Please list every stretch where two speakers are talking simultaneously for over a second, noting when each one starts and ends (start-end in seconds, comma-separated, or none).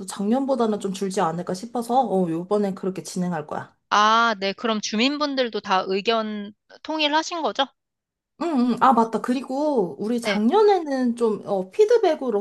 none